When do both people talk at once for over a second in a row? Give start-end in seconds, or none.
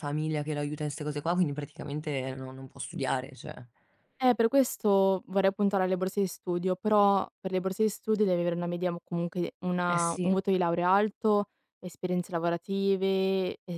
none